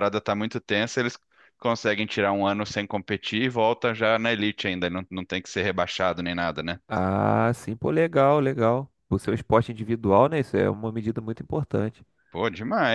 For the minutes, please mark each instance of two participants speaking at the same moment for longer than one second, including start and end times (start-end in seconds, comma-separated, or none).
none